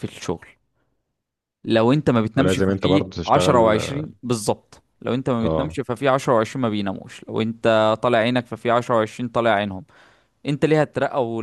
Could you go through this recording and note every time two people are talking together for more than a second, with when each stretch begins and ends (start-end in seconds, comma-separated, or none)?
2.4-3.8